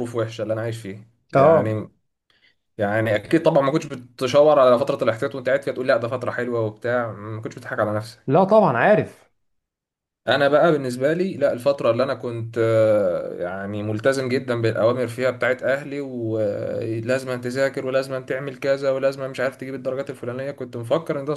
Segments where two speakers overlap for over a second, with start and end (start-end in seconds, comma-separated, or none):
none